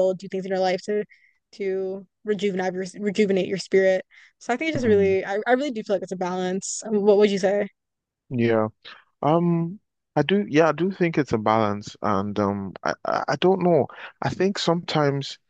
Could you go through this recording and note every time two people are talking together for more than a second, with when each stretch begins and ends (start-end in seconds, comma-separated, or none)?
none